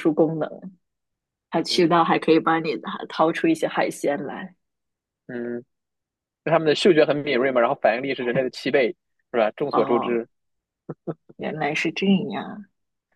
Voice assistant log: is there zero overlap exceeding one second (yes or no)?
yes